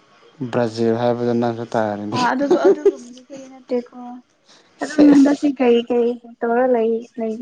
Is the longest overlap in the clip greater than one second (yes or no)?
no